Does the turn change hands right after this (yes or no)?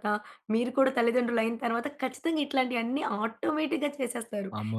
yes